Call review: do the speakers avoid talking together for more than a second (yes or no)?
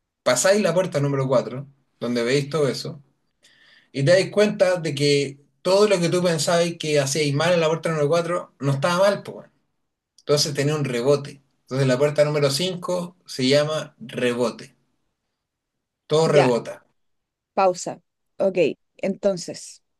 yes